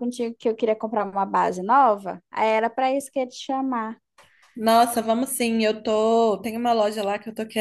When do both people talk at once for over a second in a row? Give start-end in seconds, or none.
none